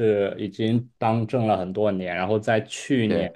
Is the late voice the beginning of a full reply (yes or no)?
no